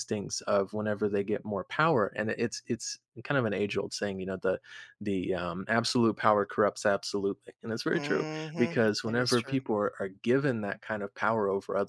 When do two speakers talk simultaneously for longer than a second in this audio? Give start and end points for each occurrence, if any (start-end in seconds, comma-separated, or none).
7.9-9.6